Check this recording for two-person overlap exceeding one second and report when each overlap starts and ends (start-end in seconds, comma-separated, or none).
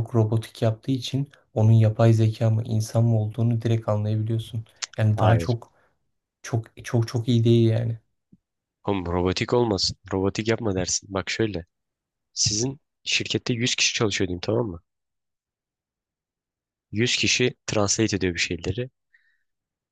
none